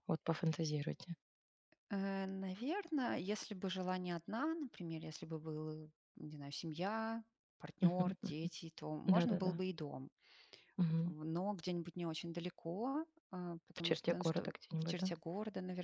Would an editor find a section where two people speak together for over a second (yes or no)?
yes